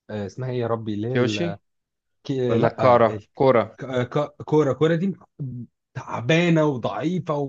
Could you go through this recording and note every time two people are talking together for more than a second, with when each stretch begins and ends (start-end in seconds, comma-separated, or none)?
none